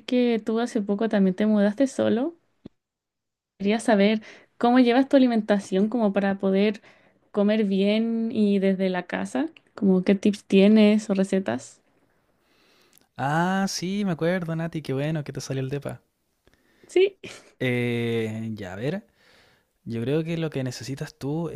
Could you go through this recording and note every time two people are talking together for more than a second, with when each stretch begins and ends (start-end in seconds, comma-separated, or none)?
none